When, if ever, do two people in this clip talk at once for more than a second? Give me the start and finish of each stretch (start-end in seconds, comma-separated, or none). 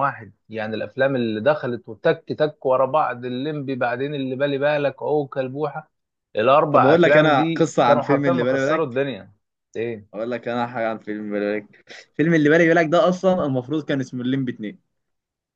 6.7-9.1